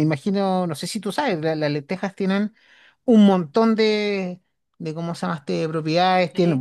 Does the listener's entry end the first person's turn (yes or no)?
no